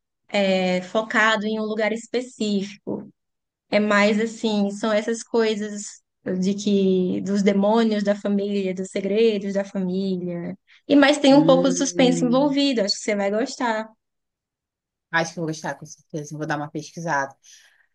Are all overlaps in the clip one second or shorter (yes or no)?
no